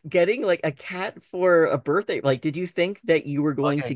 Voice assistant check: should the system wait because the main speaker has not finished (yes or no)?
no